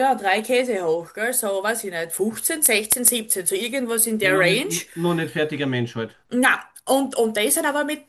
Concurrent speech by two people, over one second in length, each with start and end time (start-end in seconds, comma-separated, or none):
none